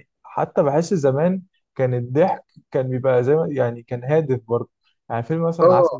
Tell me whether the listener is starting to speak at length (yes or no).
no